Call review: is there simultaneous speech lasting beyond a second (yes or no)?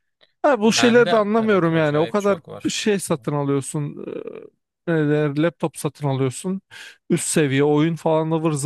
yes